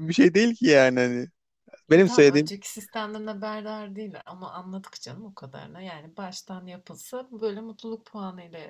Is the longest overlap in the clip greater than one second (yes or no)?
no